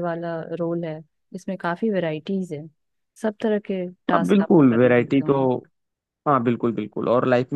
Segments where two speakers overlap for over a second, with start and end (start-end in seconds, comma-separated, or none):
4.1-5.3